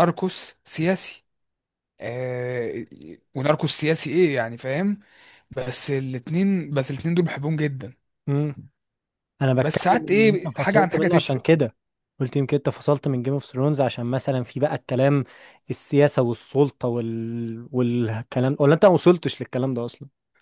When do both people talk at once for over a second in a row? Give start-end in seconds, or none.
9.6-11.4